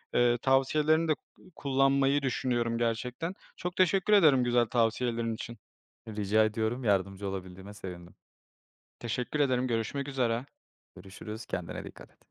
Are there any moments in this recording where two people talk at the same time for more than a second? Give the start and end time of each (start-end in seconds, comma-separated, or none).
none